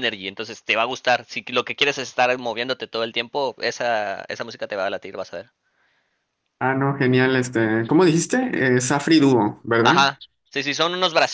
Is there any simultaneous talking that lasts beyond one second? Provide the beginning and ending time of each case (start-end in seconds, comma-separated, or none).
none